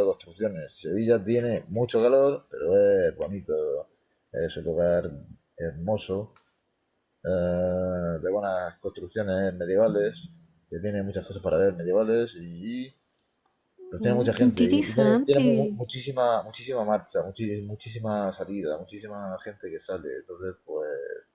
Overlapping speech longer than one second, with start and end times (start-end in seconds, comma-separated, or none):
14.0-15.8